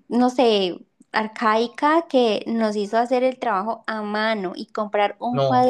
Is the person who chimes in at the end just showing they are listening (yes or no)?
yes